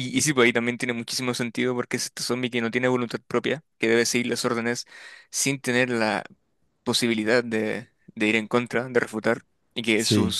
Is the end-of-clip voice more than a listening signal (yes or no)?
no